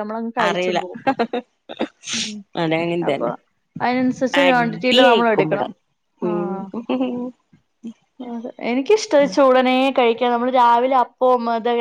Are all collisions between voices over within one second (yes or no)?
no